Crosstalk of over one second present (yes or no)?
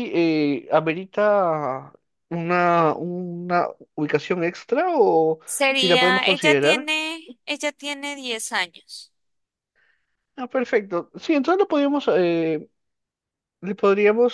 yes